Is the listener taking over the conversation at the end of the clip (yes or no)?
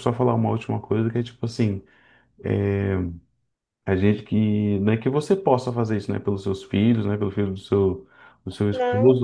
no